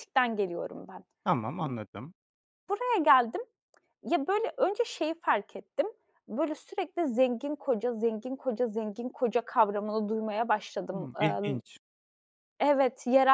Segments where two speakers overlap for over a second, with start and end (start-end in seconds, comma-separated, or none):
none